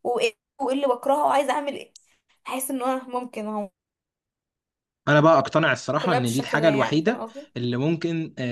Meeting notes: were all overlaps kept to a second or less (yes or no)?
no